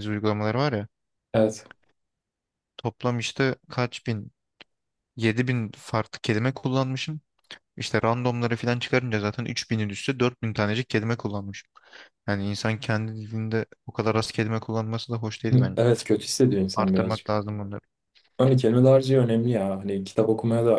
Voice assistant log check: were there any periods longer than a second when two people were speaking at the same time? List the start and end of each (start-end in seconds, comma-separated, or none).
none